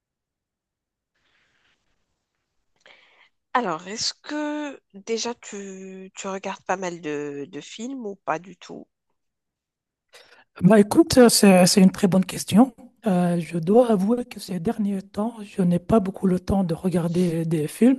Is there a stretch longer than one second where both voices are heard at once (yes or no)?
no